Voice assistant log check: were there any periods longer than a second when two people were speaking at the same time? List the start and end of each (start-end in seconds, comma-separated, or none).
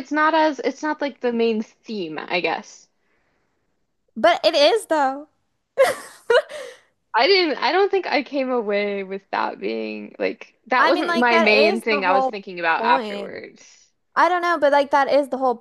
10.8-13.4